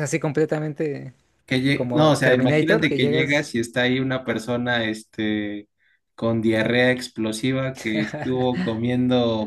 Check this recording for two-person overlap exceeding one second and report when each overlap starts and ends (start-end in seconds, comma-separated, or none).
1.7-3.5